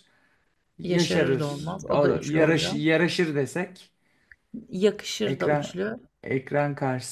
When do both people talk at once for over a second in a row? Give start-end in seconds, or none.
0.8-2.8